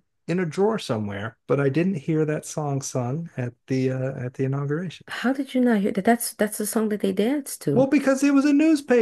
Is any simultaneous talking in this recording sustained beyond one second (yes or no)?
no